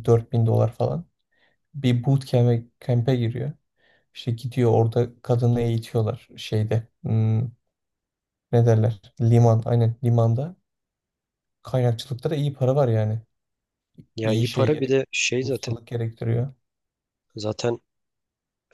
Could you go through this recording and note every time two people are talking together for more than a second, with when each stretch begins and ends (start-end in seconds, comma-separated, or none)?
14.2-15.8